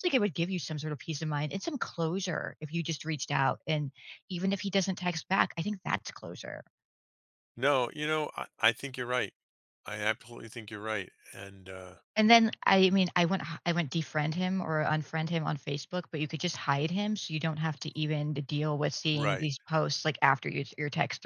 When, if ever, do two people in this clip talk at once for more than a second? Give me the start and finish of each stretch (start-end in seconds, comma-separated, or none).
none